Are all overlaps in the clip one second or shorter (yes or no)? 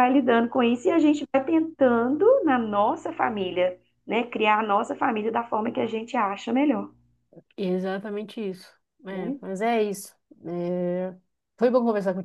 yes